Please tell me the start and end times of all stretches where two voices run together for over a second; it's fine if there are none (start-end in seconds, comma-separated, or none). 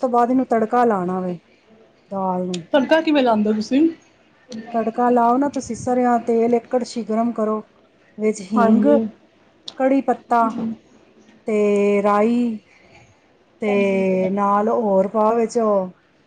none